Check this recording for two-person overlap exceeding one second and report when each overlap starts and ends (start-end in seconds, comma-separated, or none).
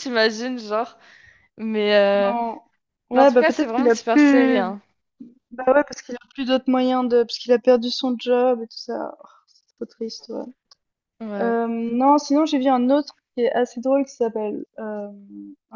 3.1-4.8